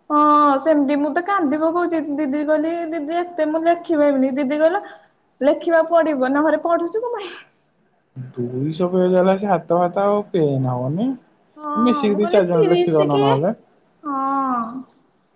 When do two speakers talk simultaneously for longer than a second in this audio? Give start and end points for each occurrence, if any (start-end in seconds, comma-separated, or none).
11.6-13.2